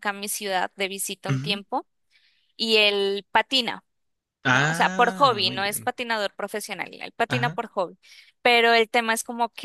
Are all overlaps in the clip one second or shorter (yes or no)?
no